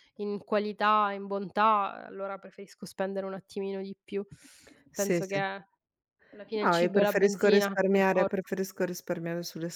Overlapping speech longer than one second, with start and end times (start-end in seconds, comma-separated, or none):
6.6-8.4